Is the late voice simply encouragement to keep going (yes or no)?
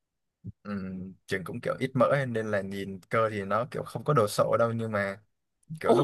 no